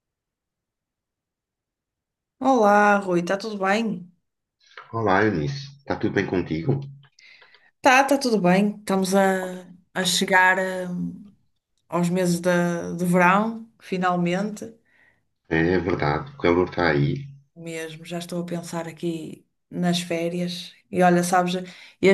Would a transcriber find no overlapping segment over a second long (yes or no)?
yes